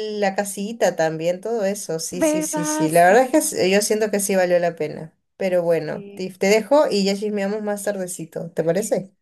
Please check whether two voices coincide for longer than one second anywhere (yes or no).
yes